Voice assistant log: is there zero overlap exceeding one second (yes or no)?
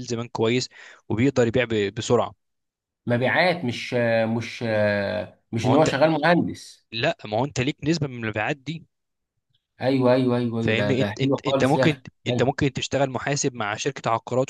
no